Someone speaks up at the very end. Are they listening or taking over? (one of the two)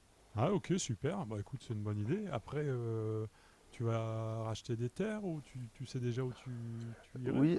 taking over